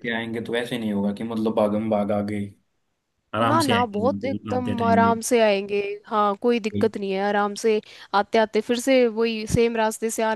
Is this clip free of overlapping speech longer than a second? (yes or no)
no